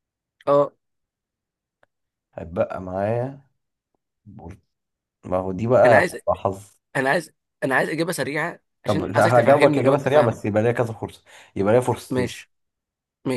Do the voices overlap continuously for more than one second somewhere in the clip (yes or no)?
yes